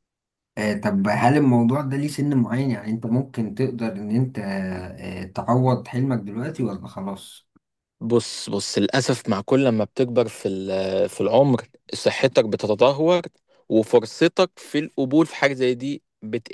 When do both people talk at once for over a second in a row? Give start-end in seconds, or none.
none